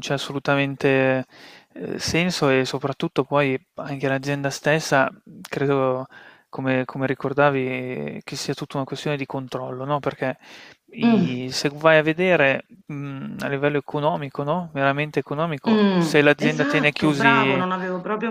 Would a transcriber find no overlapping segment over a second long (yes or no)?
no